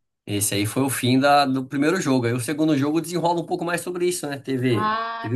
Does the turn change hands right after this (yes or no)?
no